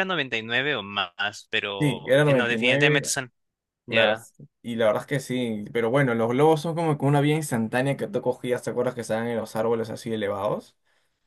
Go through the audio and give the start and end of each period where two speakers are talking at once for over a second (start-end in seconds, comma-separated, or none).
1.8-3.1